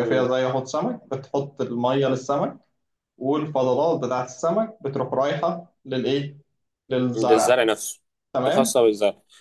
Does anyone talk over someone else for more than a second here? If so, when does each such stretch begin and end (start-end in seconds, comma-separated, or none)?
none